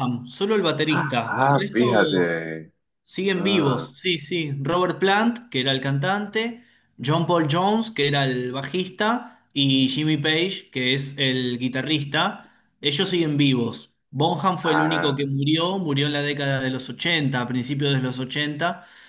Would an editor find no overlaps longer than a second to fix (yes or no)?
no